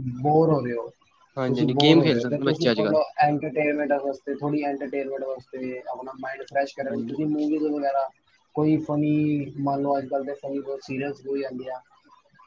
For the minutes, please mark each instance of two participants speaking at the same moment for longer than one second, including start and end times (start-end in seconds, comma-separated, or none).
1.5-3.0